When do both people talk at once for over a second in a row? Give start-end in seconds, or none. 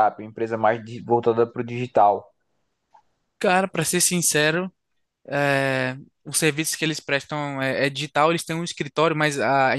none